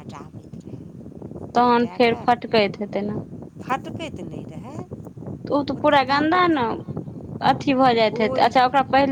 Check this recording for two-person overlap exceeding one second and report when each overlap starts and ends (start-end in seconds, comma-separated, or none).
1.6-3.1